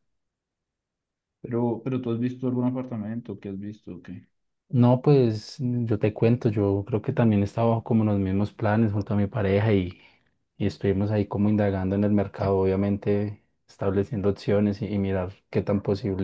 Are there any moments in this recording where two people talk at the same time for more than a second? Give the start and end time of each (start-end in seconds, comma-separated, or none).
none